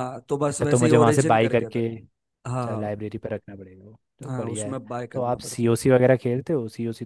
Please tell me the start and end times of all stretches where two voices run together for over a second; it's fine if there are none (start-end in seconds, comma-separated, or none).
0.5-1.8, 4.3-5.7